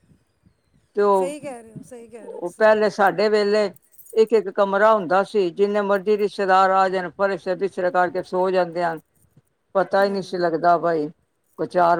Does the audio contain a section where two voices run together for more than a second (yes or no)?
no